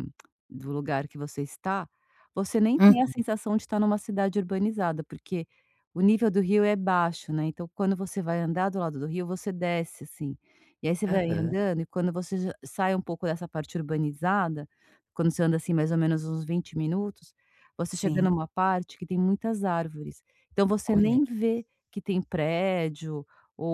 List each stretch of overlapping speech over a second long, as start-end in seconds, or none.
none